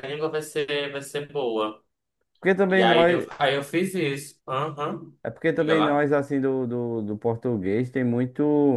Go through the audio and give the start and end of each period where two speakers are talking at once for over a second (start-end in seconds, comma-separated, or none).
none